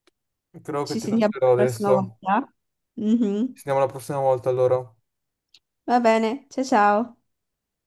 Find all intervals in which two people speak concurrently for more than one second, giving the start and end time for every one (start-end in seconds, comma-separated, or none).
0.8-2.2